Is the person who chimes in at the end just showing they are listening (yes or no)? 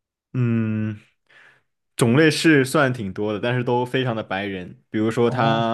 yes